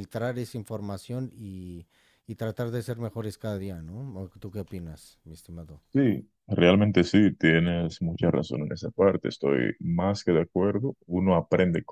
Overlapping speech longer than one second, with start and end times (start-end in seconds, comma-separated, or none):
none